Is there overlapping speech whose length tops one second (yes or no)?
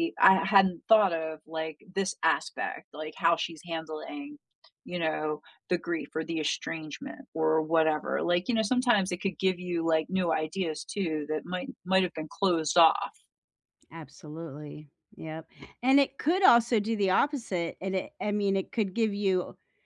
no